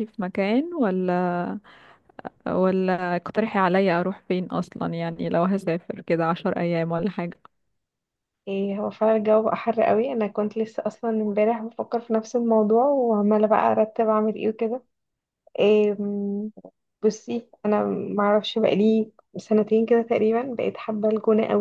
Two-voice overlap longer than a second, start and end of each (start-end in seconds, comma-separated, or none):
none